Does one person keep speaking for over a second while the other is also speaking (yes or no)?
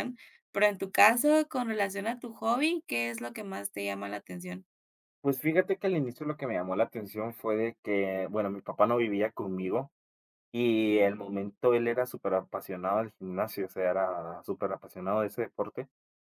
no